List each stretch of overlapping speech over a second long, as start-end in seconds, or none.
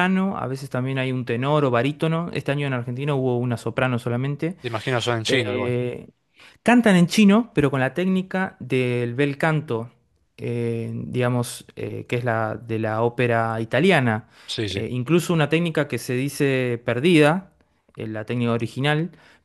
none